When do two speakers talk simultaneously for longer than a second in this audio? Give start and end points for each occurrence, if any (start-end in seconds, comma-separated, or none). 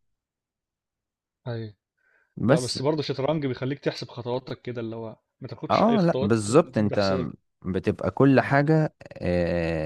5.7-7.2